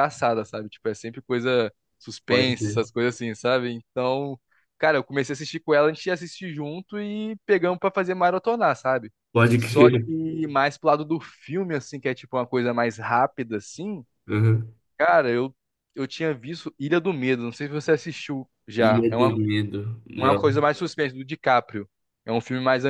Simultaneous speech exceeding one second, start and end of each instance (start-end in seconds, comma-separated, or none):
none